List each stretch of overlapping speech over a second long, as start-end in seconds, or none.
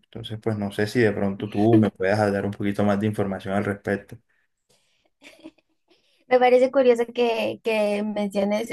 none